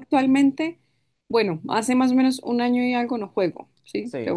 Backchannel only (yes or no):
no